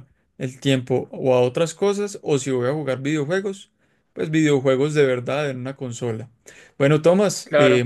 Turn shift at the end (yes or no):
no